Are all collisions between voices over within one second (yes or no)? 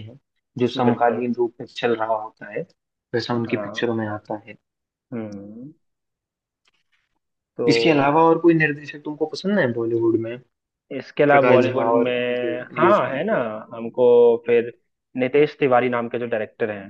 no